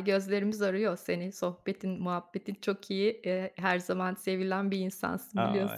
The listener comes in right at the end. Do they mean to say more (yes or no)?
yes